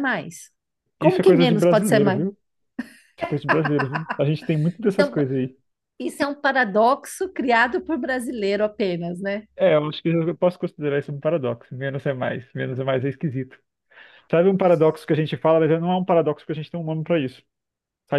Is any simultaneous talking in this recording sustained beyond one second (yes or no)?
yes